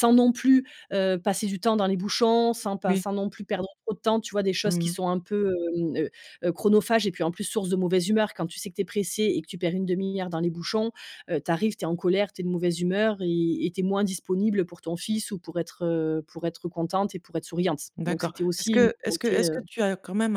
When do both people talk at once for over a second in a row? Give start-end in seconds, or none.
18.0-19.6